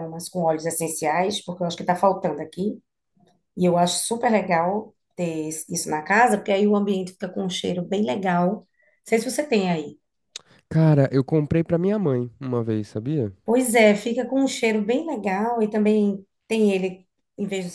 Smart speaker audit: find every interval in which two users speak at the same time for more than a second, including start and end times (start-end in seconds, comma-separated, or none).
none